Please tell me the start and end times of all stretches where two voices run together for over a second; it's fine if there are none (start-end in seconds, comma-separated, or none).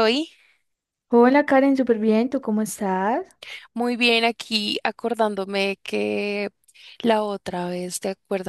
none